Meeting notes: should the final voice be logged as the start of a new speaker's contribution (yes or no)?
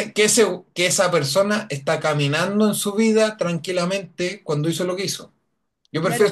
yes